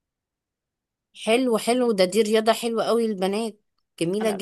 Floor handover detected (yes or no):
yes